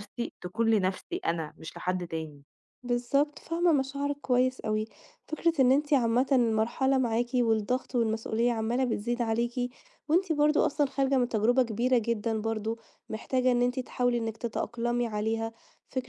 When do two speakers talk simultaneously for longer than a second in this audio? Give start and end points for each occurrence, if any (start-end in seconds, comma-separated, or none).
none